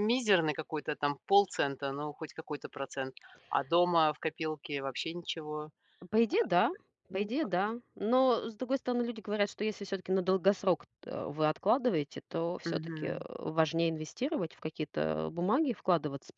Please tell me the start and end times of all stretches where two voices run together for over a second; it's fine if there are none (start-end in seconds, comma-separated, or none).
none